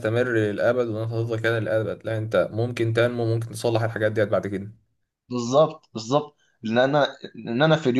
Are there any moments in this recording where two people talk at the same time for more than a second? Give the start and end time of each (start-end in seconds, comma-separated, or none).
none